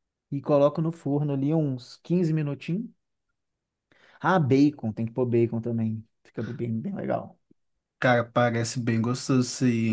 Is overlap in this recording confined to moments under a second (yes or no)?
yes